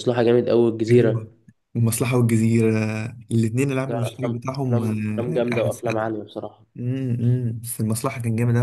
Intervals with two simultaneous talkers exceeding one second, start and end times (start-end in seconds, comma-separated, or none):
3.9-6.1